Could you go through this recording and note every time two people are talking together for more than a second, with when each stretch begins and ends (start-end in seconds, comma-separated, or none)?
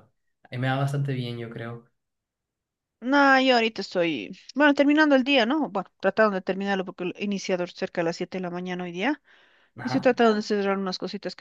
none